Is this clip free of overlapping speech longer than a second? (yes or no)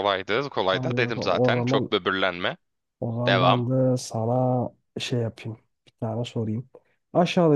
no